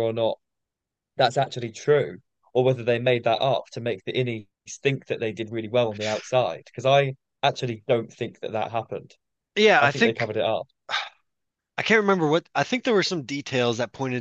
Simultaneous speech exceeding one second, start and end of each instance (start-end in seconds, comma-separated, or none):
none